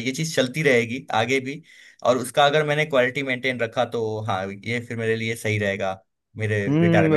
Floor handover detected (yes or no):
yes